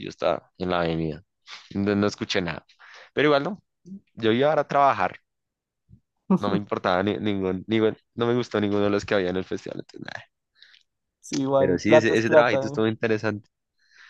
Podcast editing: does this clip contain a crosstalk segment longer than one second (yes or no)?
yes